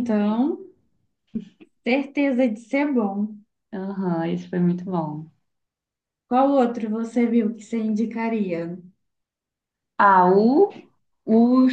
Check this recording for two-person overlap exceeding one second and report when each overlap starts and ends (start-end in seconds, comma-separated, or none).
none